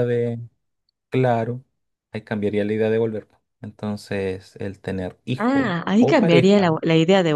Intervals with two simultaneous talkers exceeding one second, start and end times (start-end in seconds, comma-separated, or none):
5.4-6.7